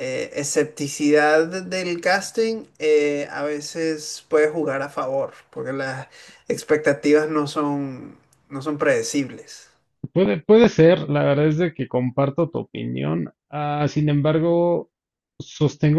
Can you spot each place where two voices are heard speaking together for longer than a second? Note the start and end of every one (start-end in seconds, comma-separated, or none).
none